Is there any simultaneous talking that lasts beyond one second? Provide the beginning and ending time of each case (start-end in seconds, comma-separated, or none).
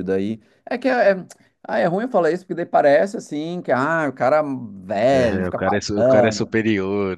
5.1-6.5